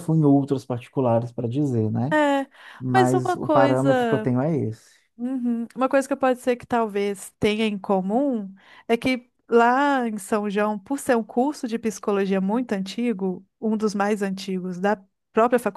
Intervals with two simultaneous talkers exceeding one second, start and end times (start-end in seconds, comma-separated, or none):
2.9-4.3